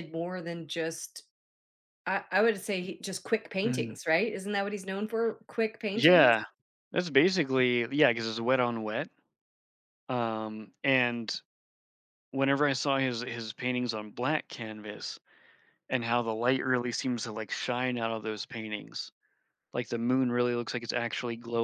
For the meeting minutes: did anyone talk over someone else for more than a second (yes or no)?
no